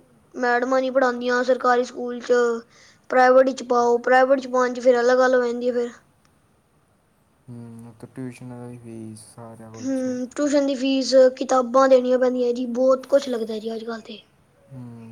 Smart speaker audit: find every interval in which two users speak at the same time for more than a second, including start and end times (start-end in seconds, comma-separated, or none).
none